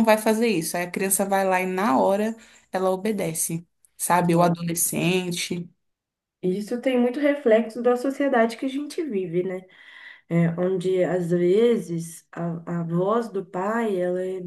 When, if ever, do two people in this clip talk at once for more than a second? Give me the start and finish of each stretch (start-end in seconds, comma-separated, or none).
none